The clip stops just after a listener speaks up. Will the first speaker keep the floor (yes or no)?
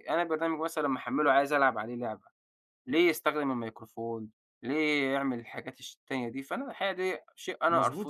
no